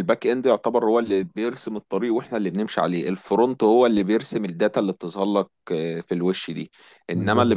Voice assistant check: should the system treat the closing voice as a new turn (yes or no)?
no